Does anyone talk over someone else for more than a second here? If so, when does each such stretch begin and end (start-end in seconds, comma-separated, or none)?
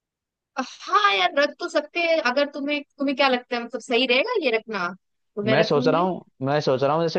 none